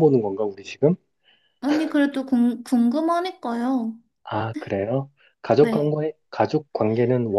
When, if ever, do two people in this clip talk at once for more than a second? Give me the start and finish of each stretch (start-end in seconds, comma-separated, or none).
none